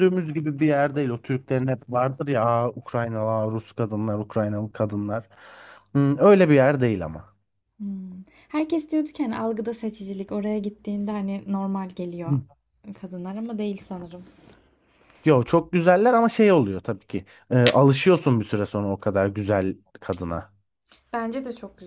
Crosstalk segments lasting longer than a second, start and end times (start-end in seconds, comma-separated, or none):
none